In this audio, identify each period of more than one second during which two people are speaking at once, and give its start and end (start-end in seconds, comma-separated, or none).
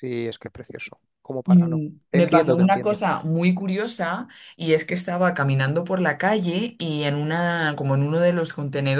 1.5-3.0